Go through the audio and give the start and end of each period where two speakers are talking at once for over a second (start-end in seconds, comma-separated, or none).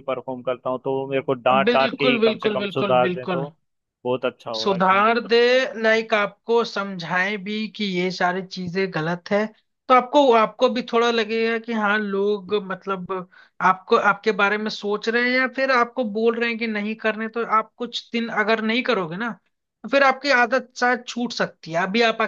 1.6-3.5